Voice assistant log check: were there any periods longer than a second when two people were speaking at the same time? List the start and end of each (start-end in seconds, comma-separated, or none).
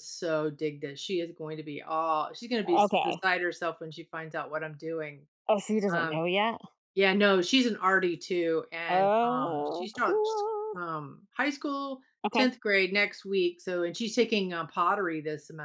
8.9-10.7